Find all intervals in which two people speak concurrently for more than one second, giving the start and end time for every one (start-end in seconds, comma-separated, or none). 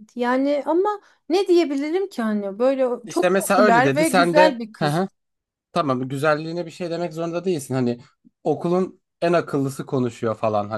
3.0-5.0